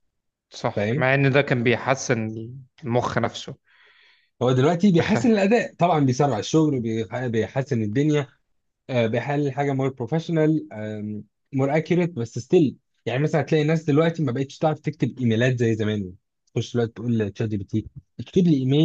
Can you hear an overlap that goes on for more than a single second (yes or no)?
no